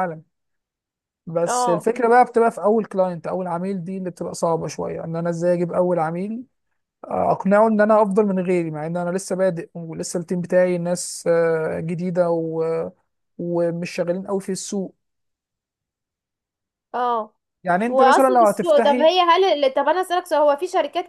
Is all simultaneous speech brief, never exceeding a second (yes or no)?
no